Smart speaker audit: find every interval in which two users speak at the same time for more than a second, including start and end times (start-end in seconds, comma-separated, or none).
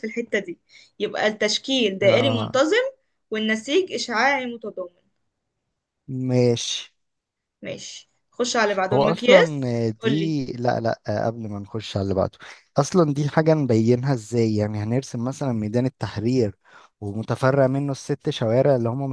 8.9-10.4